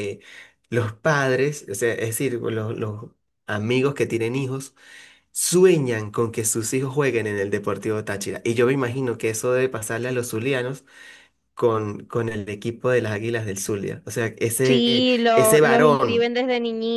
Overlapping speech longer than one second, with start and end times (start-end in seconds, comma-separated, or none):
14.6-16.3